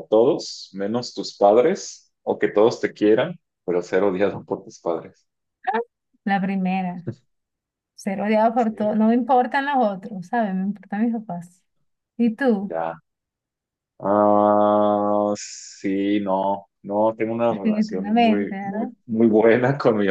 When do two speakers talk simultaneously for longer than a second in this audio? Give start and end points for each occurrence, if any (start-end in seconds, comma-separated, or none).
17.5-18.9